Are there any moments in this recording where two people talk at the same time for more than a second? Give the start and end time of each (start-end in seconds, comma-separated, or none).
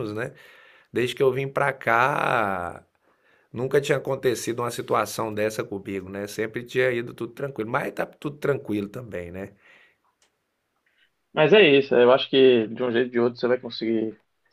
none